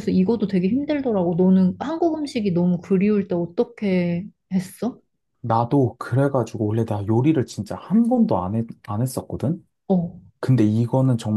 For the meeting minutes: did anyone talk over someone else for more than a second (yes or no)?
no